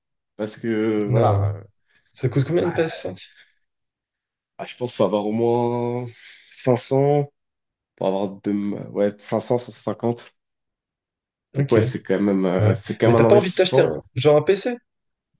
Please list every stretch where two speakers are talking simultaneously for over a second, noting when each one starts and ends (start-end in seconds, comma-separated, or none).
12.6-13.9